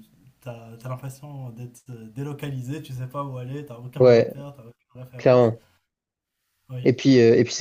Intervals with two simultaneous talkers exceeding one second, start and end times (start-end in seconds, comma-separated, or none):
none